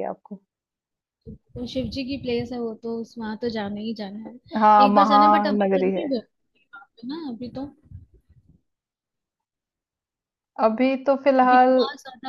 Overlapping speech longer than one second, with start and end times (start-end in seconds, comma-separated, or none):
4.8-6.1